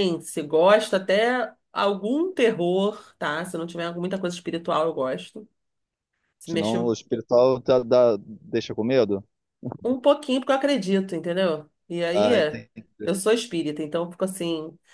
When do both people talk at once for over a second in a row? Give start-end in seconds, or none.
none